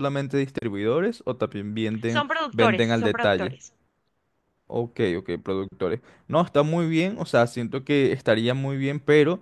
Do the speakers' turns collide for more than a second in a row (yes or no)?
yes